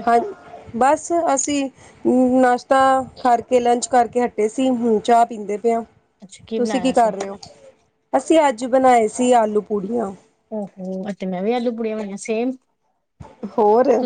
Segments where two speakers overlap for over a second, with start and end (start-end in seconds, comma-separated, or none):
none